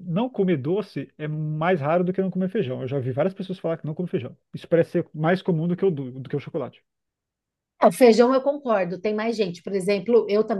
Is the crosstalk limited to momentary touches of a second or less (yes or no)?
yes